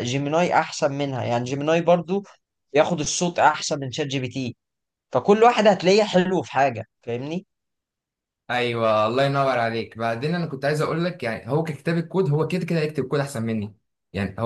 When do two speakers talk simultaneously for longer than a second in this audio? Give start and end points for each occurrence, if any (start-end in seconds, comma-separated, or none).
none